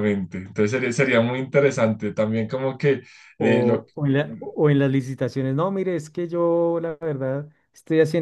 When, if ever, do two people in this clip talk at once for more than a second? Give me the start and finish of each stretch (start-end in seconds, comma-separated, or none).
none